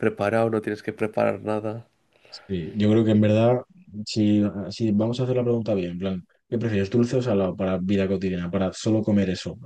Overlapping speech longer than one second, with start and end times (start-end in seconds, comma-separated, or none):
none